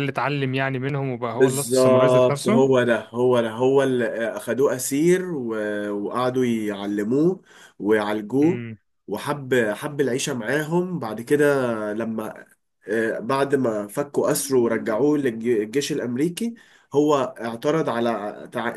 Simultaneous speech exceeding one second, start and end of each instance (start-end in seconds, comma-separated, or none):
1.3-2.7